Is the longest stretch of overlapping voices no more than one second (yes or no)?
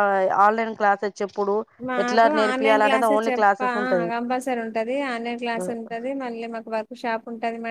no